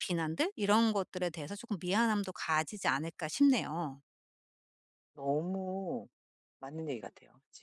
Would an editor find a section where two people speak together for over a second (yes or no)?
no